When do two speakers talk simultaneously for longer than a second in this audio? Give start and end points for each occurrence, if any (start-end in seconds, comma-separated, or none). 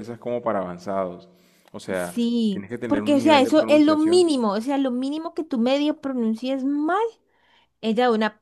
2.1-4.3